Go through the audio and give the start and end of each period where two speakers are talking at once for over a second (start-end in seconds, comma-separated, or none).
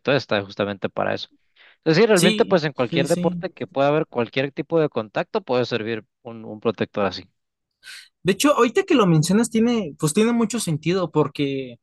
2.1-3.5